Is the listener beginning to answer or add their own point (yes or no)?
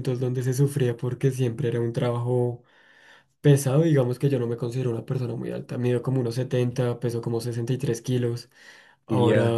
no